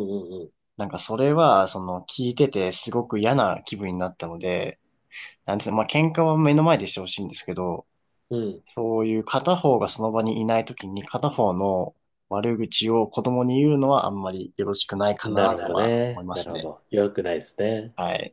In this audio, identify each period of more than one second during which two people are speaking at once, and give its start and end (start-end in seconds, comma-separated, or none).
15.2-16.7